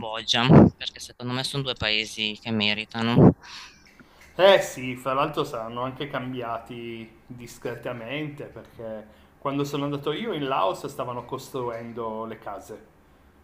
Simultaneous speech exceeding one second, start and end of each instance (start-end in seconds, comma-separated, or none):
none